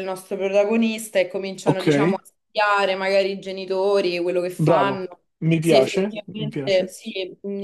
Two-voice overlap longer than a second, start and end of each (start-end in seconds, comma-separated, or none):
4.6-6.9